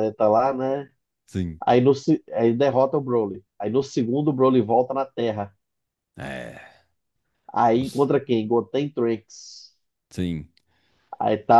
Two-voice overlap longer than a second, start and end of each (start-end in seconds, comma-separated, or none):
none